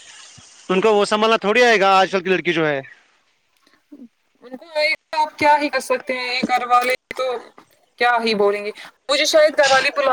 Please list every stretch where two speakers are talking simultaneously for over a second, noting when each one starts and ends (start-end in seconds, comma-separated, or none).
none